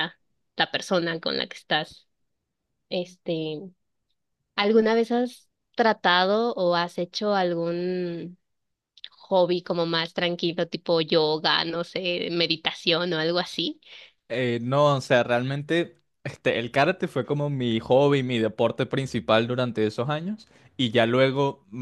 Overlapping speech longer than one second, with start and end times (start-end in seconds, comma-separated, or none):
none